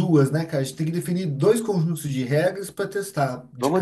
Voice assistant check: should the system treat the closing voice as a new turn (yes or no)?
yes